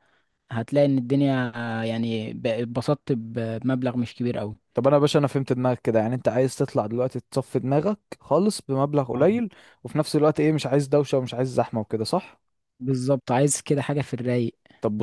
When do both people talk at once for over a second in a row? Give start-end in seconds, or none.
none